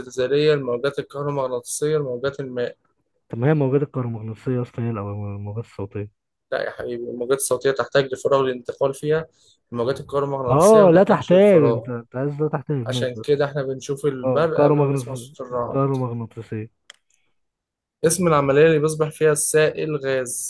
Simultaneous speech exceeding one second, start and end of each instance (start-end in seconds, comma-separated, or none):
10.5-11.9, 14.2-15.8